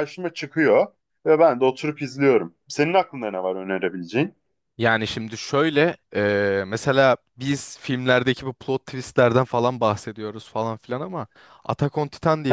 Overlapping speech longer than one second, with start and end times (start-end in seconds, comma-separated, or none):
none